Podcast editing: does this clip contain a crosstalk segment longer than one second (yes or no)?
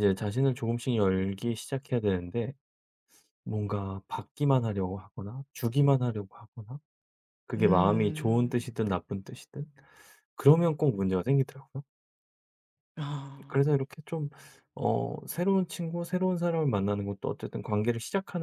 yes